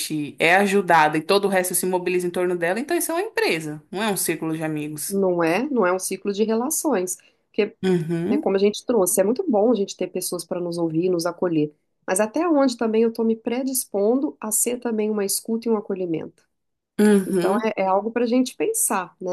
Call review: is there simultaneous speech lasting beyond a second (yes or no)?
no